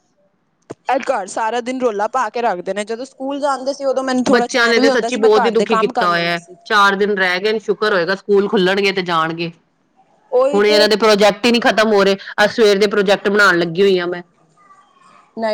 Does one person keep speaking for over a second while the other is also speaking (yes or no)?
yes